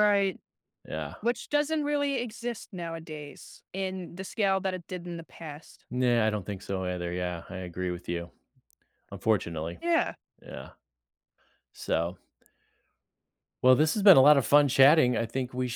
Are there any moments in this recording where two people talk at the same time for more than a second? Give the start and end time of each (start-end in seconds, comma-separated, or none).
none